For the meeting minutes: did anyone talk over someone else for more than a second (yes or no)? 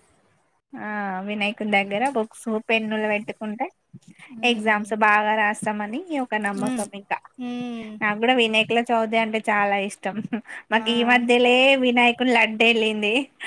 no